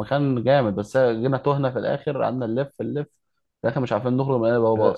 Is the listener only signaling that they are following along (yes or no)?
no